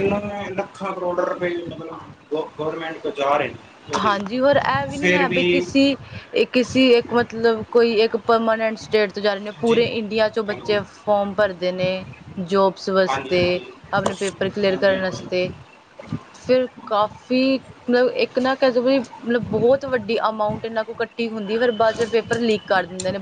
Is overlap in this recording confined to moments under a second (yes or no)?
yes